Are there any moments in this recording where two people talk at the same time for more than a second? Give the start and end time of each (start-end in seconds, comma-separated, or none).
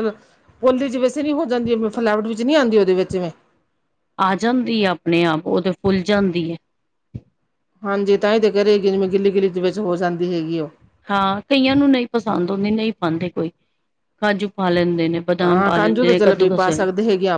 15.4-16.9